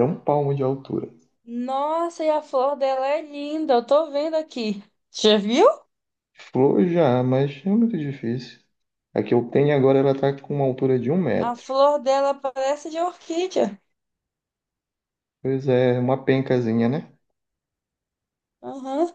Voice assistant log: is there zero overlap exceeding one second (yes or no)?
yes